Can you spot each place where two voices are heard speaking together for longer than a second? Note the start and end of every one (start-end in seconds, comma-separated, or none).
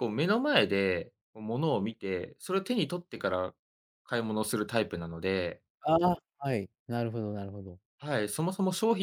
none